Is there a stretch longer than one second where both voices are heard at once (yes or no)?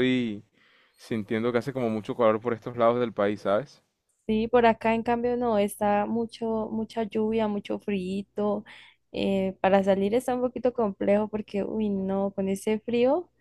no